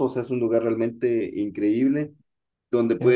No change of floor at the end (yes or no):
yes